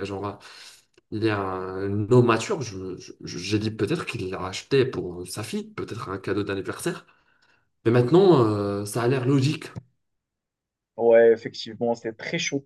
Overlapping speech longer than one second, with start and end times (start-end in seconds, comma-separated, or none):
none